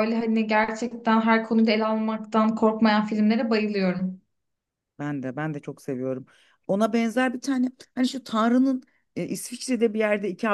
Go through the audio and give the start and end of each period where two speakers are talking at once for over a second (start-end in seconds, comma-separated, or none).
none